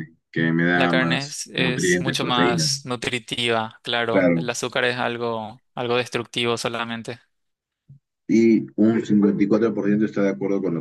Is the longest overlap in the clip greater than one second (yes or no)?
yes